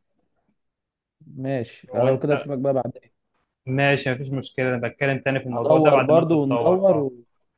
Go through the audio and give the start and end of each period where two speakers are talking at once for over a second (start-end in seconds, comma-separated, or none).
5.5-7.1